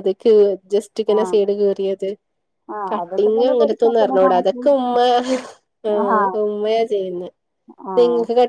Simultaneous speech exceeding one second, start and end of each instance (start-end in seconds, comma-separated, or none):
2.9-4.6